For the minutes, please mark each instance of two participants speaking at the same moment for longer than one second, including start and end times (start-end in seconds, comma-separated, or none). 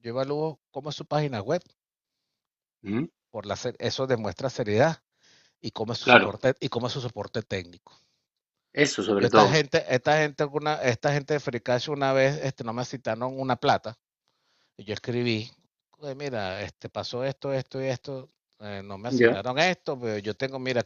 none